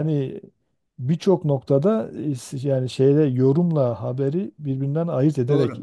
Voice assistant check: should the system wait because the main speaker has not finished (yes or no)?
no